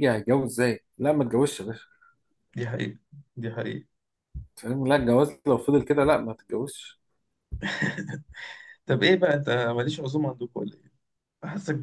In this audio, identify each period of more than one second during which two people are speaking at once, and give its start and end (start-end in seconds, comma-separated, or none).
none